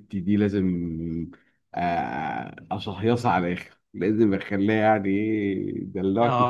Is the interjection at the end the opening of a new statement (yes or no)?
yes